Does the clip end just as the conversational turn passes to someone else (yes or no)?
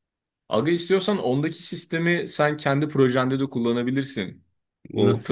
no